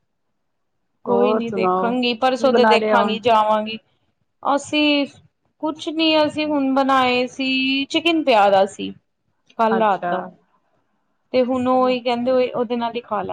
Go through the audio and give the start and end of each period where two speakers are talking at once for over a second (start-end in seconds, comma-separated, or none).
1.1-3.2